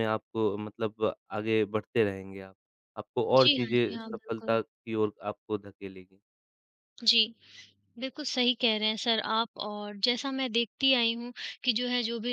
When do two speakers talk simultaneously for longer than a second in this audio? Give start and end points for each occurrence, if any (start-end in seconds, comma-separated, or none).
3.3-4.6